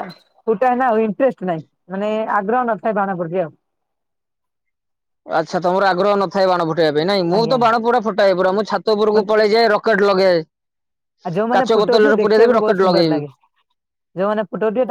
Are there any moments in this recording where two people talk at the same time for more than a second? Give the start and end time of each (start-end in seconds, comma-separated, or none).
11.6-13.2